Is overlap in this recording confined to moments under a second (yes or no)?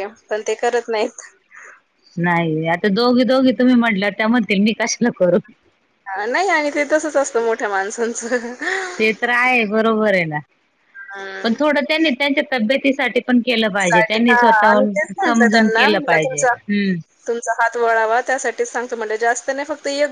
no